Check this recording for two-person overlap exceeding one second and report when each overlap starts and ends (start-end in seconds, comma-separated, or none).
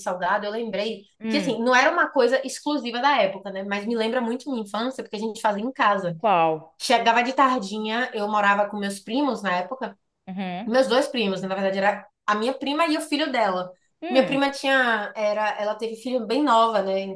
none